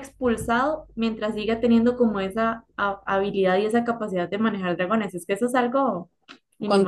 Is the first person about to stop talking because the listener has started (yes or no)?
yes